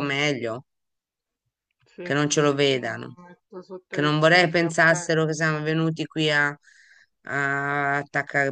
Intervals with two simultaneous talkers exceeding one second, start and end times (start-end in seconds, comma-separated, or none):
3.9-5.1